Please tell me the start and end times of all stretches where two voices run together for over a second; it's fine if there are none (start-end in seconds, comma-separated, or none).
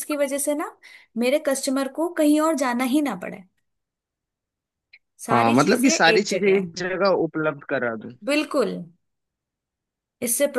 5.3-6.7